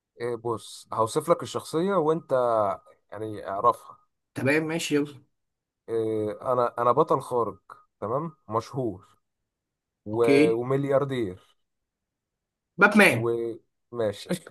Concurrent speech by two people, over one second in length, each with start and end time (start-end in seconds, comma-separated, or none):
none